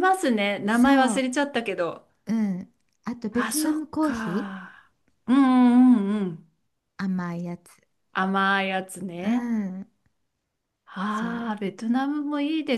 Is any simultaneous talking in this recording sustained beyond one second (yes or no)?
yes